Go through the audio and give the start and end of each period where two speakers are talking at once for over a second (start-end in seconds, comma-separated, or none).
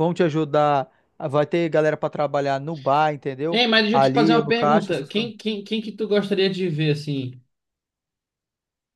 3.5-5.3